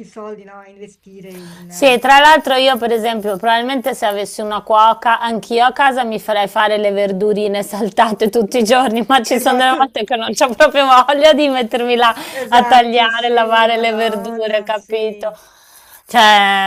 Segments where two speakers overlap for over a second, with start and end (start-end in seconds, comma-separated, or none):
12.3-15.3